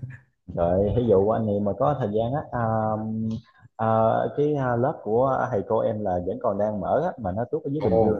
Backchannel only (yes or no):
yes